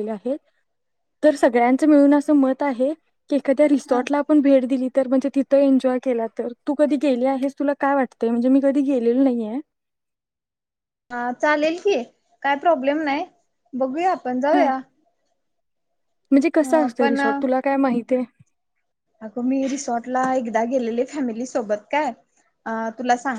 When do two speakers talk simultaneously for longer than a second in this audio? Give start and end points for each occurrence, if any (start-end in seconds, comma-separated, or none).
none